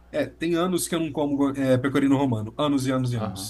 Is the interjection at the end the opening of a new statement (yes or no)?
yes